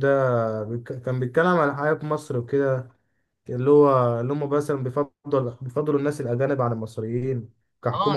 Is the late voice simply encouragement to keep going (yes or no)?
no